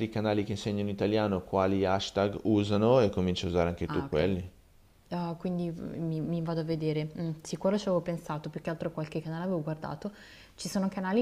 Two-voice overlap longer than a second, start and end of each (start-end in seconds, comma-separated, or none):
none